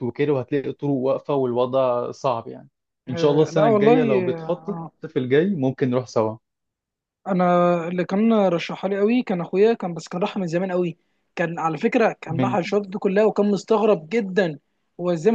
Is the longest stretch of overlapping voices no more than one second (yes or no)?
no